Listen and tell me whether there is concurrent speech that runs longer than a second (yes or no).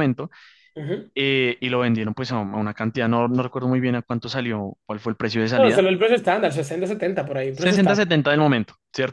no